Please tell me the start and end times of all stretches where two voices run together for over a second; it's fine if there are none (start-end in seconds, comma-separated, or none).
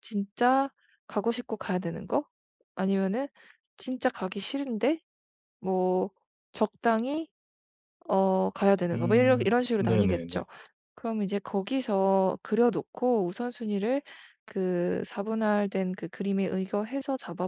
8.9-10.4